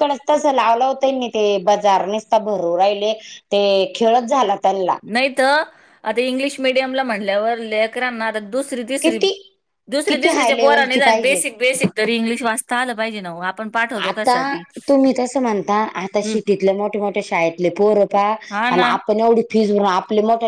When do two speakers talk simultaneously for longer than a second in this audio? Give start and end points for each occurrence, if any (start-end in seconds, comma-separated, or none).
10.1-11.4